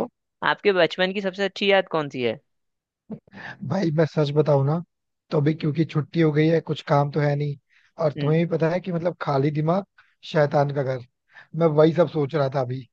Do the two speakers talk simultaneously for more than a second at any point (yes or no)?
no